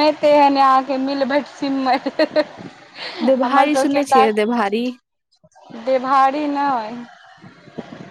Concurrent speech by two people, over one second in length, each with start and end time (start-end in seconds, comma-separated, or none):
none